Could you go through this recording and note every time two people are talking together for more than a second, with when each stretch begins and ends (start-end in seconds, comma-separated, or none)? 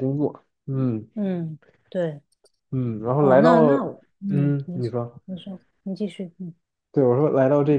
3.2-5.2